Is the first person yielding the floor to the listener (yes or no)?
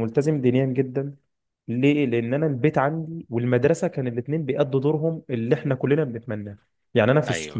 no